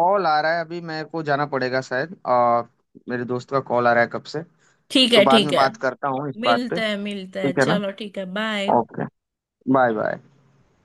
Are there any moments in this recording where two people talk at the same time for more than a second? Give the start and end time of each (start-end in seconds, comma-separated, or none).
6.4-7.8